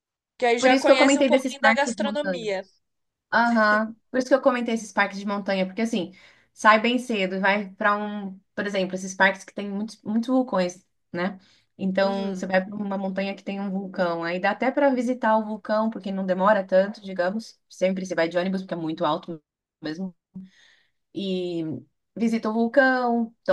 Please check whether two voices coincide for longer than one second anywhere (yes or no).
yes